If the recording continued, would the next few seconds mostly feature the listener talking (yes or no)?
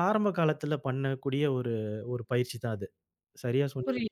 yes